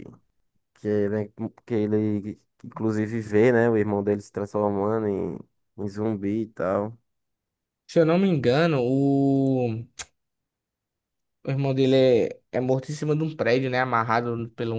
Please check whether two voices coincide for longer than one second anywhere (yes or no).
no